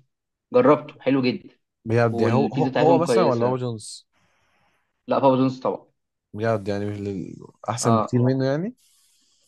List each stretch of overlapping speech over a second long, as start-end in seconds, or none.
2.1-3.6